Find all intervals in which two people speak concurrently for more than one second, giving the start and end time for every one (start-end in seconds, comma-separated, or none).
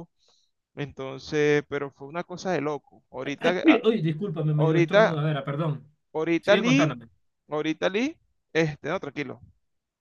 none